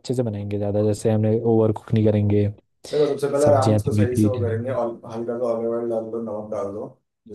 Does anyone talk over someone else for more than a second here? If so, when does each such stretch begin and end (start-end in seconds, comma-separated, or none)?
3.4-4.8